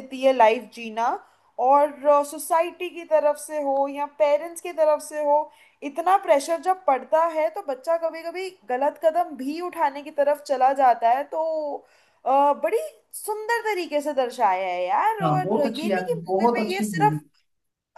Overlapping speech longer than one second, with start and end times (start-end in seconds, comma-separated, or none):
15.2-17.2